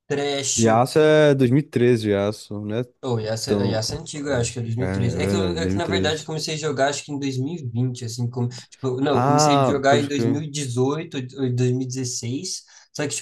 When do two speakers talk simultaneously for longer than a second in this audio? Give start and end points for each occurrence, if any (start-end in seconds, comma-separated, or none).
4.8-6.3, 9.1-10.4